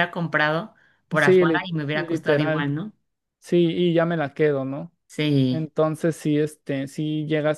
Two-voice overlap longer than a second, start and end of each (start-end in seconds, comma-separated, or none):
1.1-2.7